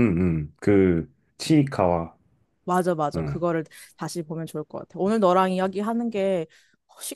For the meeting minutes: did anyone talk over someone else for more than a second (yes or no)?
no